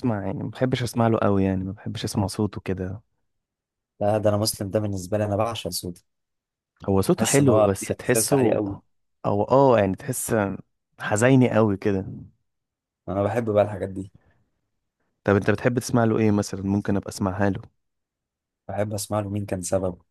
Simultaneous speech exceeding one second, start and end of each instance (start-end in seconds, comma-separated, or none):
7.1-8.6